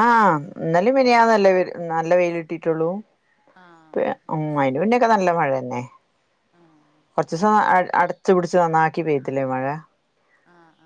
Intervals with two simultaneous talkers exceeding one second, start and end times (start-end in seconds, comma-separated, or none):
none